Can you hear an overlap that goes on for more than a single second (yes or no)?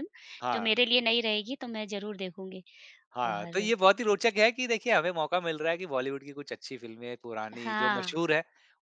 no